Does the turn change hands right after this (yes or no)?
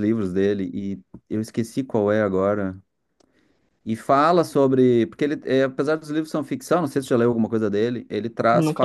no